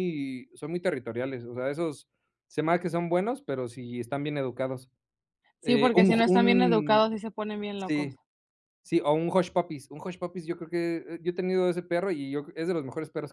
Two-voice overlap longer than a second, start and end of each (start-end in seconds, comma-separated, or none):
5.6-7.1